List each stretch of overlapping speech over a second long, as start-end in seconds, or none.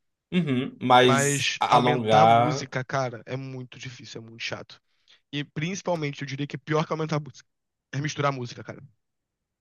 1.1-2.7